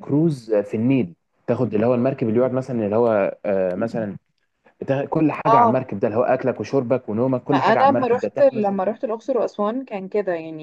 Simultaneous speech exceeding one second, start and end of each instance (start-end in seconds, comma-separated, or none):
7.5-8.8